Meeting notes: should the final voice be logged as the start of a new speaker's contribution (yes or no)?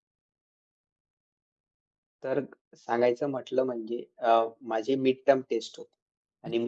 no